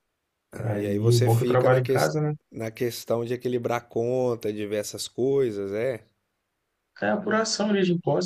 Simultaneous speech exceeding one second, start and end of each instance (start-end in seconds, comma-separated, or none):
0.6-2.3